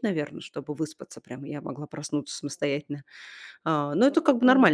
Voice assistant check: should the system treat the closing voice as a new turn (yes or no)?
no